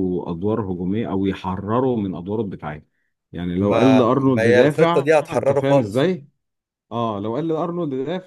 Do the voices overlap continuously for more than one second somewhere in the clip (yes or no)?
yes